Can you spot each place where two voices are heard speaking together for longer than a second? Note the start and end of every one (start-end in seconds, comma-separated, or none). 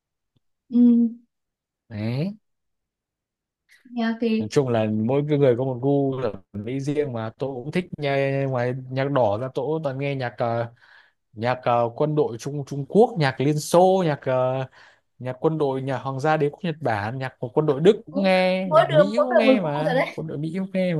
18.1-20.2